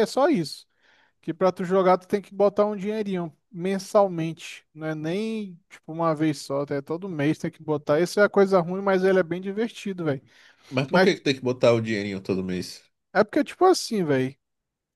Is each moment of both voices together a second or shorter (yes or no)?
yes